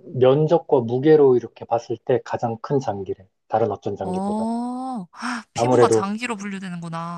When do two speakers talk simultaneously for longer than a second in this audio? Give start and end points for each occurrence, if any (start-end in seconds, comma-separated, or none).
none